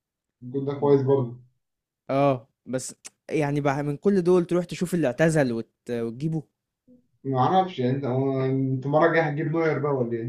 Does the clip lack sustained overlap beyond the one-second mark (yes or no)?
yes